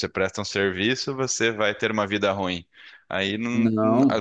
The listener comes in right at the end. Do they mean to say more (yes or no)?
no